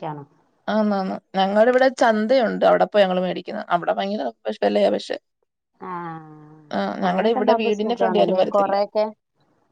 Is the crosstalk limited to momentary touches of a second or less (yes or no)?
no